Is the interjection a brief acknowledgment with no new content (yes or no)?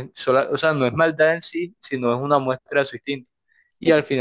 yes